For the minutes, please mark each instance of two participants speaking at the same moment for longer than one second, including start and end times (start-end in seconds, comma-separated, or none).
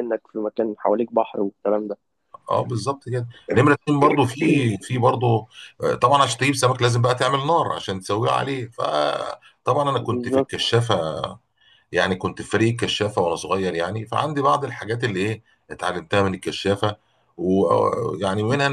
none